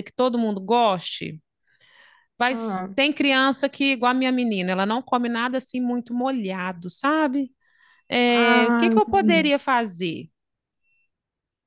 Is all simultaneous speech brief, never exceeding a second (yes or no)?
no